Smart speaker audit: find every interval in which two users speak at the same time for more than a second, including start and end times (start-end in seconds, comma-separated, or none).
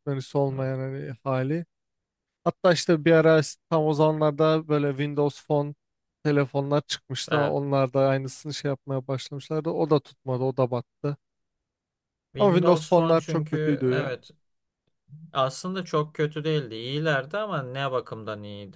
12.4-14.2